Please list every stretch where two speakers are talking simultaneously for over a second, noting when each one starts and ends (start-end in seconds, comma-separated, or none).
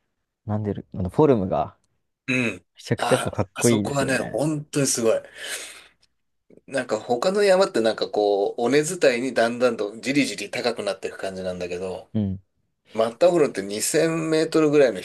2.8-4.4